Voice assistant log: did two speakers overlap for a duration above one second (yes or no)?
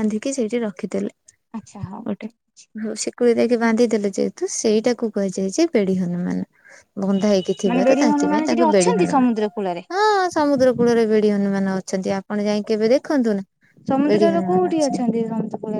yes